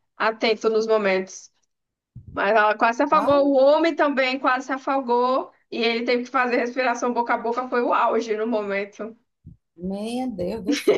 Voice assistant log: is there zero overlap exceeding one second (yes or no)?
yes